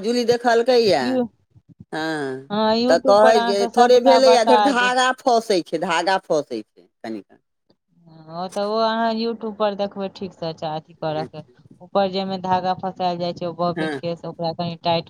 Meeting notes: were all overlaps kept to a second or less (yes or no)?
no